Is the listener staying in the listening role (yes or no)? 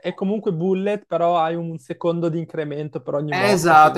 no